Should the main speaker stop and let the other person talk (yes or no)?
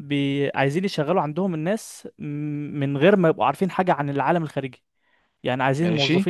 no